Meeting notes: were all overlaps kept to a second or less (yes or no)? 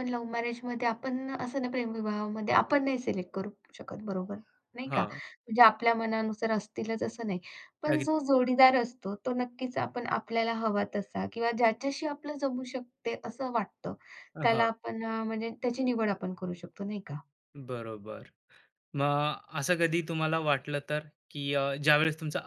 yes